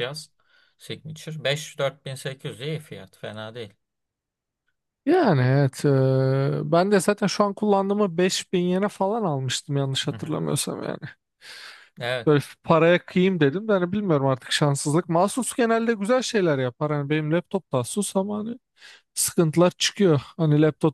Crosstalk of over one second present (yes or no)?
no